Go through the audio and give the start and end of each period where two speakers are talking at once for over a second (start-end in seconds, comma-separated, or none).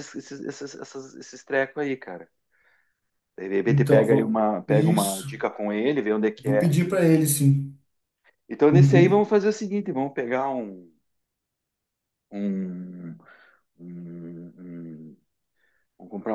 3.6-5.4